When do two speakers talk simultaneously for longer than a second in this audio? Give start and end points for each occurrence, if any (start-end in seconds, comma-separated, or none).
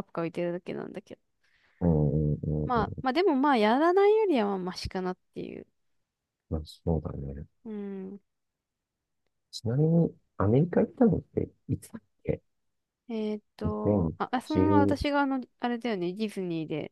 13.6-15.0